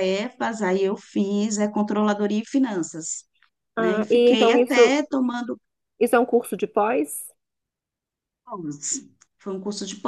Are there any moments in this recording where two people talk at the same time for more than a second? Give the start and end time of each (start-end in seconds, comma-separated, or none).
3.8-5.0